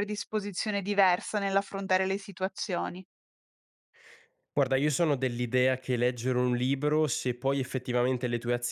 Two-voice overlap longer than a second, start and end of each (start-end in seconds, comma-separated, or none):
none